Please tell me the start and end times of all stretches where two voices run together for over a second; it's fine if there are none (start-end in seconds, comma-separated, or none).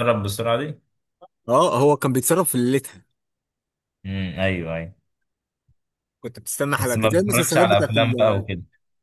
6.8-8.5